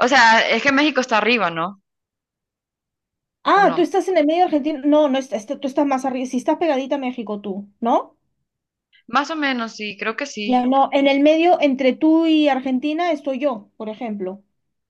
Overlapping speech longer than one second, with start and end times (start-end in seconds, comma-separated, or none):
none